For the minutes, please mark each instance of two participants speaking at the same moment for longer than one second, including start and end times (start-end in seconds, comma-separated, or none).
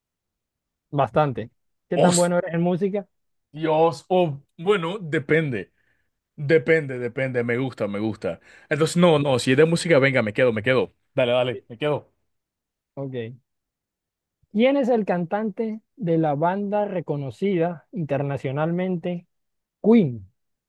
none